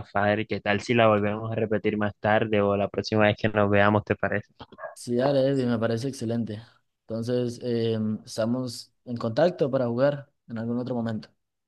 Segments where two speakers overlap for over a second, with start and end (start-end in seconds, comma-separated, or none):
none